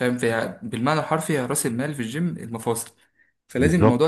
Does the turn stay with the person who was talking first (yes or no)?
yes